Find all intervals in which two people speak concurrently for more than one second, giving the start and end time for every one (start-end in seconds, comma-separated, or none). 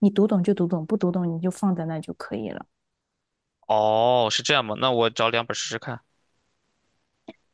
none